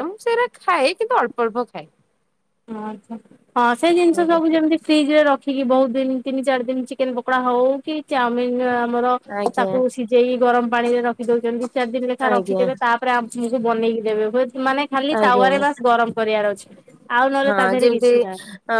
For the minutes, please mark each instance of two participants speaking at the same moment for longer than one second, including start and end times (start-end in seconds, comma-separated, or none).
none